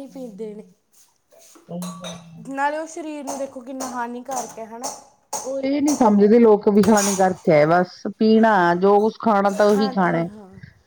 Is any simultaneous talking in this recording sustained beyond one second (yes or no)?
no